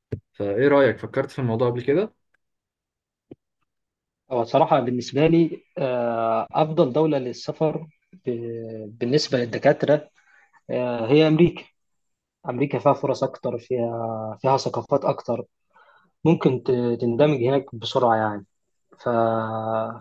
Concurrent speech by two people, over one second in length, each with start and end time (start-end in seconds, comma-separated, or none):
none